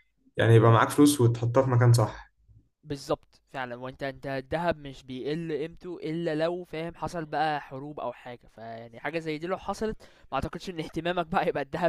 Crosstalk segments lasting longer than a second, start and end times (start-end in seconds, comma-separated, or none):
none